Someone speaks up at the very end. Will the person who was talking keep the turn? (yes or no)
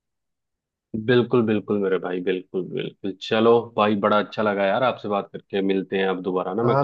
no